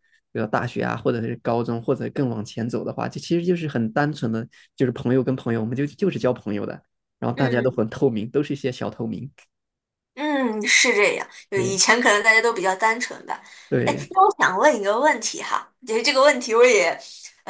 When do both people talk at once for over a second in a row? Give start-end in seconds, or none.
none